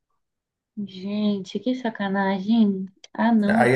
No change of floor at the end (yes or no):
no